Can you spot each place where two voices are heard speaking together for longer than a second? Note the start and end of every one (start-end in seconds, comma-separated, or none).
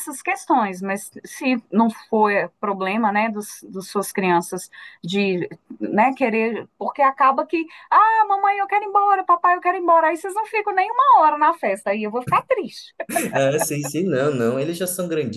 none